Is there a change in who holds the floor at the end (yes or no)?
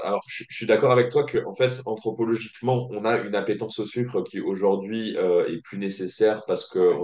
no